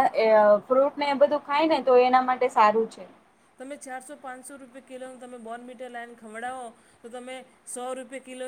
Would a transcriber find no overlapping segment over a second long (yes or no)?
yes